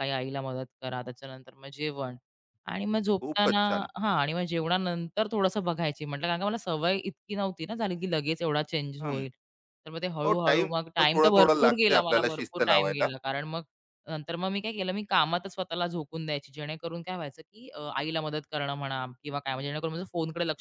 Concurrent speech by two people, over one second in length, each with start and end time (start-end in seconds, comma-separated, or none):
10.3-13.1